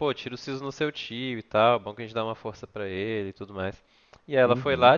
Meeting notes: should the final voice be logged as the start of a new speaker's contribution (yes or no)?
no